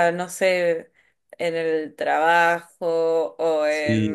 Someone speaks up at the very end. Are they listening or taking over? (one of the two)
listening